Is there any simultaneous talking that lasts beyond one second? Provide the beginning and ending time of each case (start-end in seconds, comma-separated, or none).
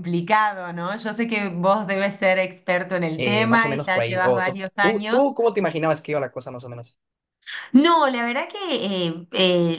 3.2-5.3